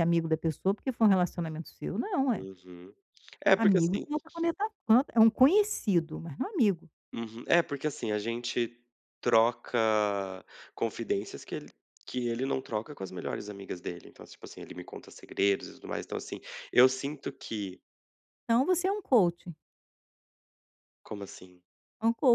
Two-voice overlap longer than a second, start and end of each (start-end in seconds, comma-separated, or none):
none